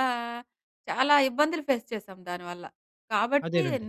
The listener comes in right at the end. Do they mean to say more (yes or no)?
no